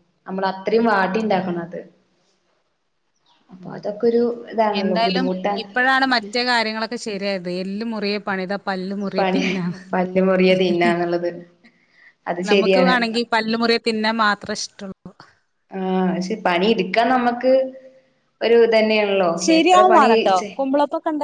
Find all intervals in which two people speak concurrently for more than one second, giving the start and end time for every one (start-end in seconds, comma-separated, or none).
none